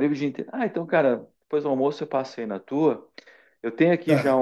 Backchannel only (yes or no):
yes